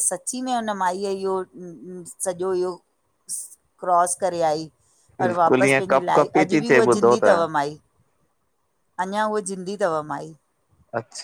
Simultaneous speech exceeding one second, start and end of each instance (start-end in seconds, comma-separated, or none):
5.2-7.4